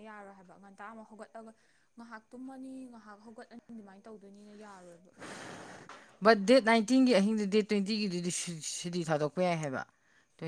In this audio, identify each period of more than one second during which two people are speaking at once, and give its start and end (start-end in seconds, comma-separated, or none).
none